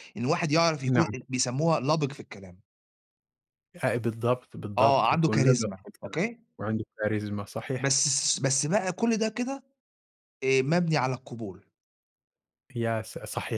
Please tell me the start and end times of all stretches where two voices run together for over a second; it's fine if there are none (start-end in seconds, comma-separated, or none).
4.8-6.2